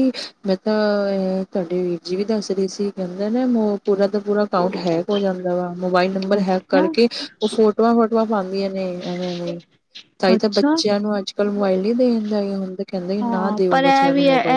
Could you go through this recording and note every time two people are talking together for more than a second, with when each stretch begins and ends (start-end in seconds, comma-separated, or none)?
none